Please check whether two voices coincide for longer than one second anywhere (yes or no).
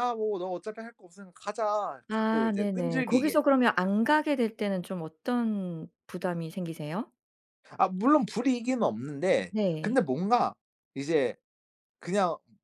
yes